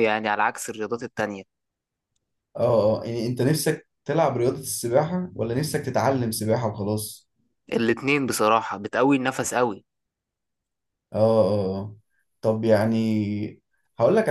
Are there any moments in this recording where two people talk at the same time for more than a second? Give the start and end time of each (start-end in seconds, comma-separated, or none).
none